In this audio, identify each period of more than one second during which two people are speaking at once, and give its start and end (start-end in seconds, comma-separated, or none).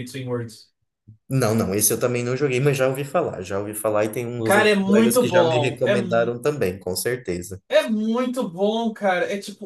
4.4-6.3